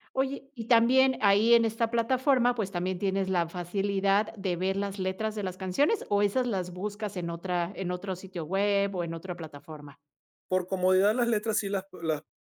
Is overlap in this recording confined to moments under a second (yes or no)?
yes